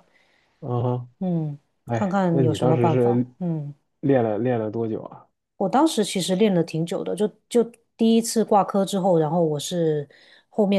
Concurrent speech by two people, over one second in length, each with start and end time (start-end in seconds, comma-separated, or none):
1.9-3.3